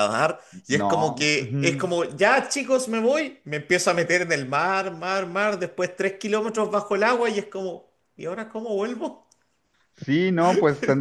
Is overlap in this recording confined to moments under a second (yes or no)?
no